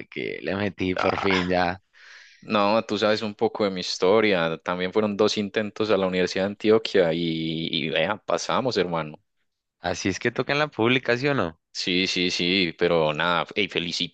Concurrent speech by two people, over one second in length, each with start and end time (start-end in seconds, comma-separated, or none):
none